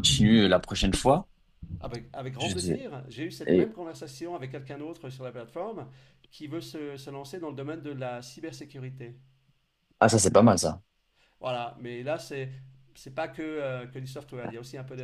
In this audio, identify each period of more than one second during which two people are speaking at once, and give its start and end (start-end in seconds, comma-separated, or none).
none